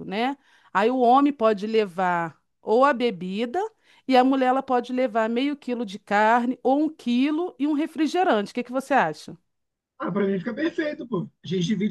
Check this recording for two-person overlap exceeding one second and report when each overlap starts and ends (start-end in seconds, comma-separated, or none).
none